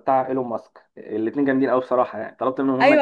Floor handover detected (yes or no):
yes